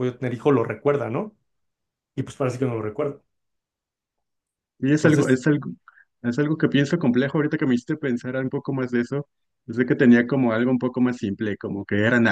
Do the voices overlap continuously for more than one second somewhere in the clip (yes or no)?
no